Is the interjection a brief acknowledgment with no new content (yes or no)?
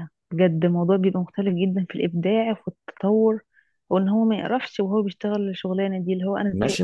no